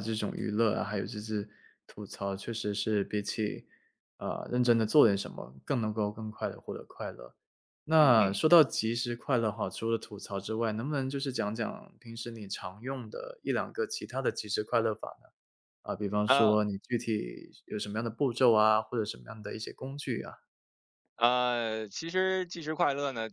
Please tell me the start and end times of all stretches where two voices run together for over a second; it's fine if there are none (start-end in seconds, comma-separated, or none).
none